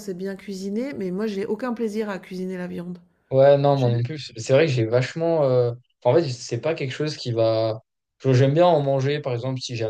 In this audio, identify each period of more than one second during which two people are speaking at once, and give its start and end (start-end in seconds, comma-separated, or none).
none